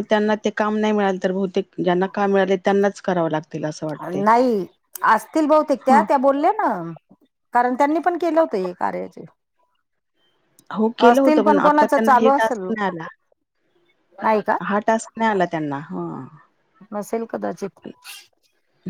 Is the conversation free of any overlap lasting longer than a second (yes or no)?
no